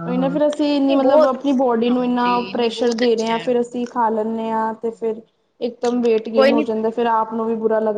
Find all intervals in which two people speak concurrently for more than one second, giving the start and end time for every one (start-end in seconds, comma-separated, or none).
1.9-3.5